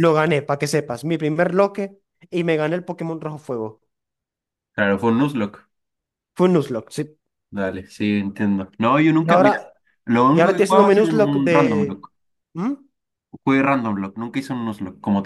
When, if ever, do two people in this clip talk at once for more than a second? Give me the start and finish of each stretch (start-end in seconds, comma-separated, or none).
10.3-12.0